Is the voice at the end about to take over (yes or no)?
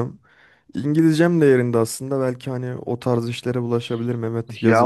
yes